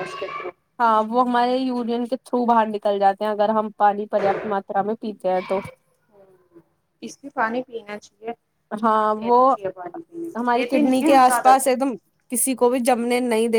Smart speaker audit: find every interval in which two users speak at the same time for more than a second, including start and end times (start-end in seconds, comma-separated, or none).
10.4-11.7